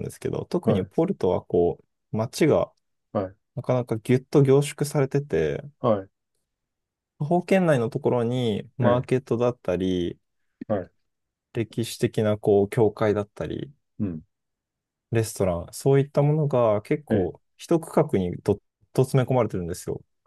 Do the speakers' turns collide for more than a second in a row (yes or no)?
no